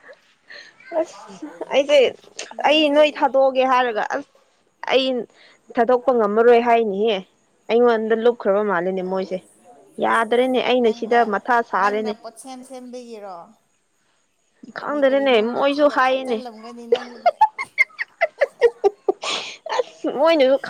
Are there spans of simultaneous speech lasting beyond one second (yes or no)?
yes